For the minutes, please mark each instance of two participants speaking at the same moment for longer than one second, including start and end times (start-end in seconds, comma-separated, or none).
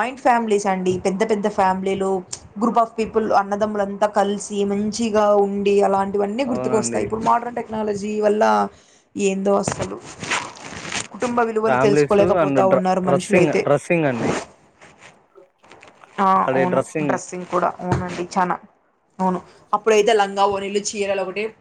11.7-13.6